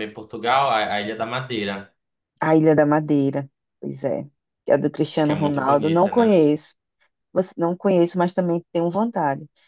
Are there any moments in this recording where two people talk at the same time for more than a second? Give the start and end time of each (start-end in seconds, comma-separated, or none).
5.1-6.4